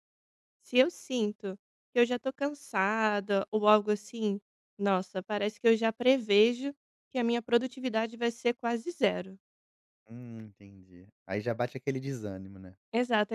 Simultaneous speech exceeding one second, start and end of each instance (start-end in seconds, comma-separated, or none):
none